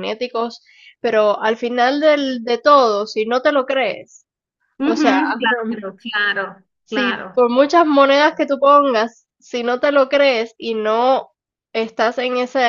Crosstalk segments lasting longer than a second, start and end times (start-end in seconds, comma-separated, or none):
none